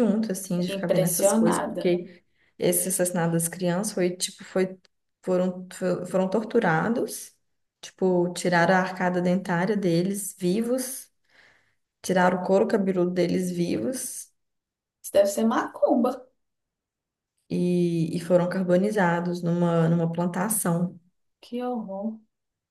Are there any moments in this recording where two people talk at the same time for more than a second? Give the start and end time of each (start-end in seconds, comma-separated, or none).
0.7-2.0